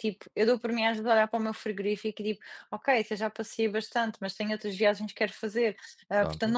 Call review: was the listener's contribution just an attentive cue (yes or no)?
yes